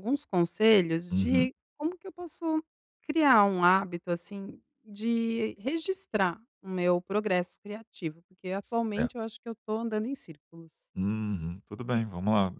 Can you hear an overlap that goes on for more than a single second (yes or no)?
no